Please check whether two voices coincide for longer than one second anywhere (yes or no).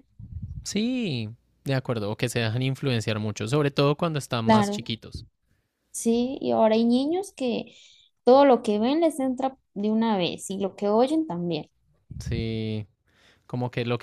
no